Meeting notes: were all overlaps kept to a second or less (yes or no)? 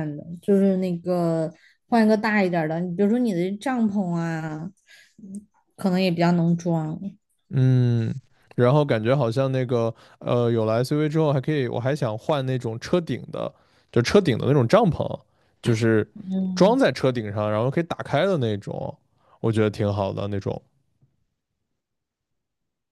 yes